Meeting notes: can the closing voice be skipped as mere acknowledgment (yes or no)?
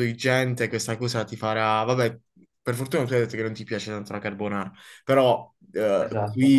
yes